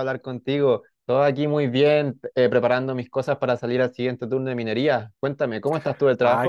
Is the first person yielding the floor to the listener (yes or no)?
yes